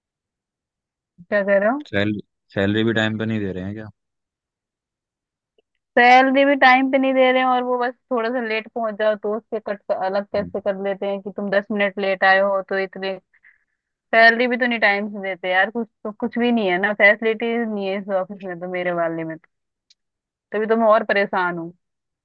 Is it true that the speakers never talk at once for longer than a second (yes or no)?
yes